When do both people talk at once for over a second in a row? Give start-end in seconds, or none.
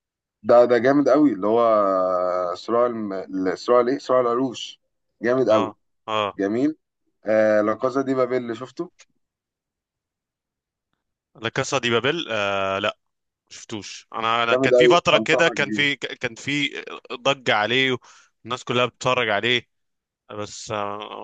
14.5-15.9